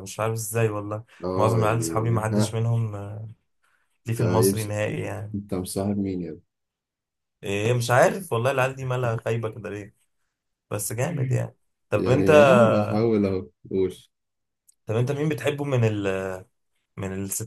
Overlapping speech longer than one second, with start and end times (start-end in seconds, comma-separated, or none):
1.2-2.6